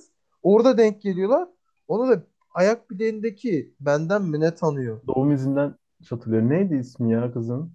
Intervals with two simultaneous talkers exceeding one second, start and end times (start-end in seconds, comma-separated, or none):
none